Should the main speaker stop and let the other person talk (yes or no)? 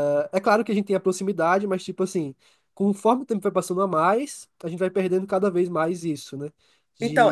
yes